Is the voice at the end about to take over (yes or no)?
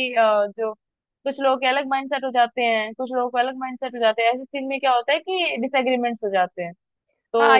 yes